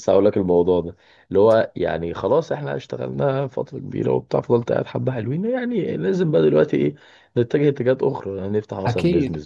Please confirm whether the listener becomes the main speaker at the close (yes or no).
no